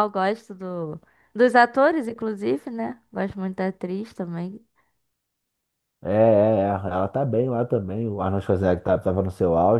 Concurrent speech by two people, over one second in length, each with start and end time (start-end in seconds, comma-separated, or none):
none